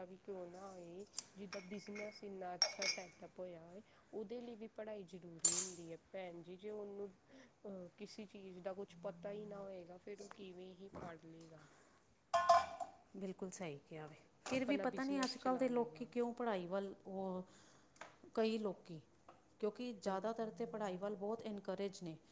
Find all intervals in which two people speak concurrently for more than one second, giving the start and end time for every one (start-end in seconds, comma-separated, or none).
14.5-16.1